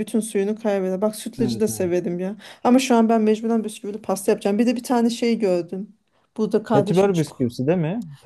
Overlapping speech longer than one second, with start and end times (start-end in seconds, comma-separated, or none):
none